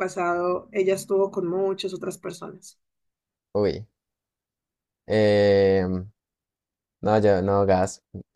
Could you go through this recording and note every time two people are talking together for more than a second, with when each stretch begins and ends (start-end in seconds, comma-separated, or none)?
none